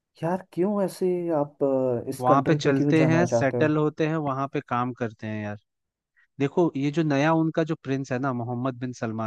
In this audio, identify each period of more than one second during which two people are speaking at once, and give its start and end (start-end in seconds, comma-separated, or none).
2.2-3.8